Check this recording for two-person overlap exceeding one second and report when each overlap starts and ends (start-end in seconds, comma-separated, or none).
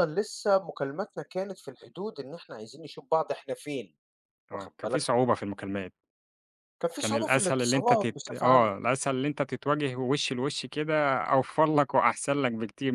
7.0-8.8